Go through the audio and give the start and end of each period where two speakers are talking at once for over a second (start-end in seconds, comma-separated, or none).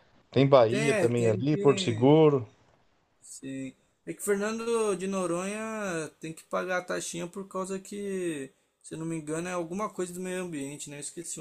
0.7-2.1